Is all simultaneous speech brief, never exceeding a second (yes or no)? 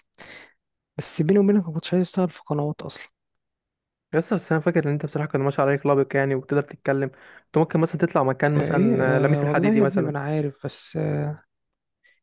no